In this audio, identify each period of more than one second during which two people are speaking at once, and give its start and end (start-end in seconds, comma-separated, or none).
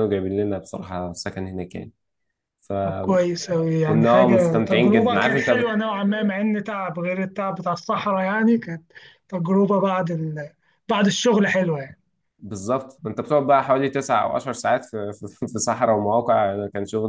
4.1-5.5